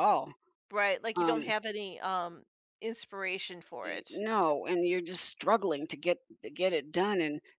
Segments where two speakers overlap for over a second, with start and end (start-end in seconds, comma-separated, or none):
none